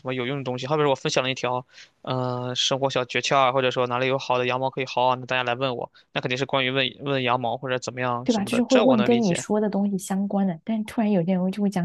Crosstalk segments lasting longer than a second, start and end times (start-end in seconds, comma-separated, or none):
8.2-9.4